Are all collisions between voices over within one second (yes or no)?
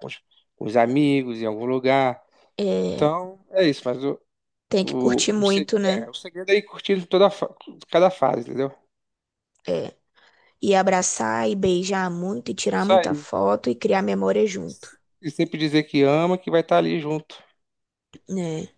no